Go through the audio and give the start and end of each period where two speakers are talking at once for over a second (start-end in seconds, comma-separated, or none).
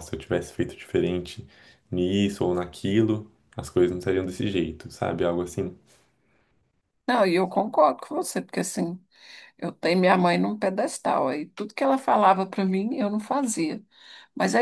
none